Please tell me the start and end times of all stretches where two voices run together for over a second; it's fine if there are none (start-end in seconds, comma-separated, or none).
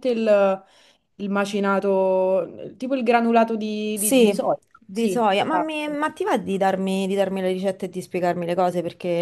3.9-6.0